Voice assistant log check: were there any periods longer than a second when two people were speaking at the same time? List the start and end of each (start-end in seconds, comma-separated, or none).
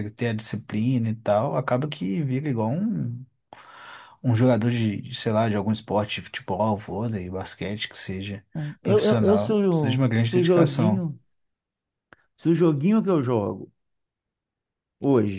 8.8-11.0